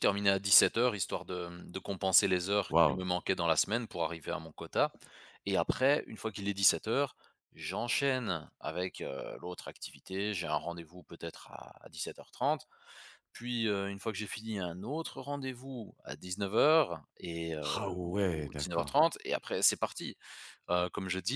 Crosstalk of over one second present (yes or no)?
yes